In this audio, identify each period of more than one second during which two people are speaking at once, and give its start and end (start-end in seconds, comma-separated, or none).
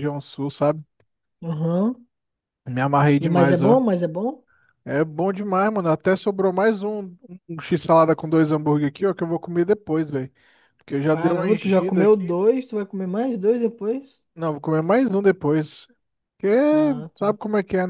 11.1-12.4